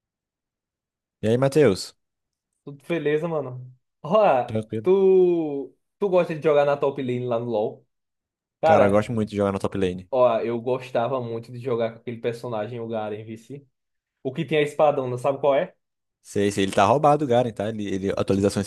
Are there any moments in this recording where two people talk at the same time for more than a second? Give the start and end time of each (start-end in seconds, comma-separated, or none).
none